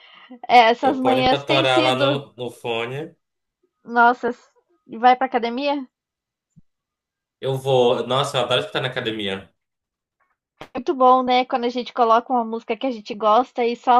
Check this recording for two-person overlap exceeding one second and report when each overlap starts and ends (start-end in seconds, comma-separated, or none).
0.8-2.2